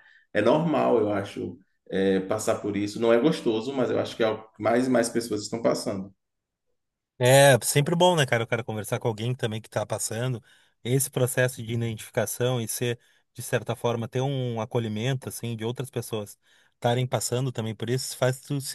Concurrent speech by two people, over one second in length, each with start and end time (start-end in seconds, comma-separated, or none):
none